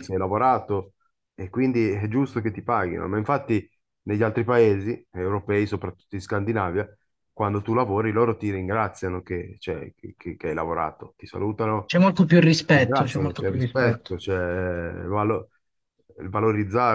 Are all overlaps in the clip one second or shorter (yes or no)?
no